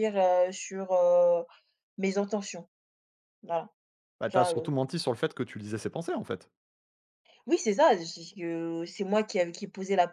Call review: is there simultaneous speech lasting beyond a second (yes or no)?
no